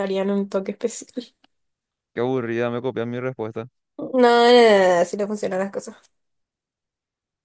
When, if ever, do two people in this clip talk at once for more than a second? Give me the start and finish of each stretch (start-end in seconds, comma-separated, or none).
none